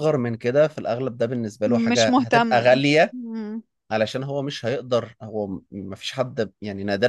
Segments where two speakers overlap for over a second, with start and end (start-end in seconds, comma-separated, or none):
1.6-3.1